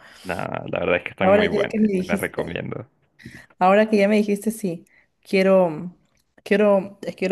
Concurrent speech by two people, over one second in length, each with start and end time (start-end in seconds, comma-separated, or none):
1.2-2.5